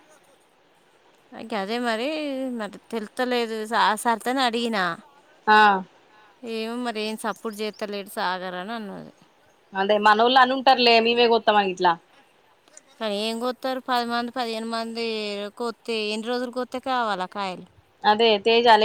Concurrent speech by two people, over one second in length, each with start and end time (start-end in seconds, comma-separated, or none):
none